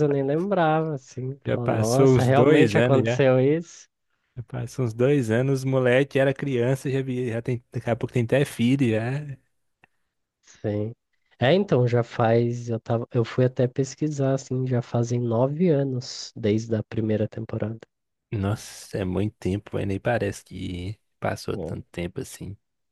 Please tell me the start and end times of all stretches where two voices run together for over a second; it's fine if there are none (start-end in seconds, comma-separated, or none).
1.4-3.2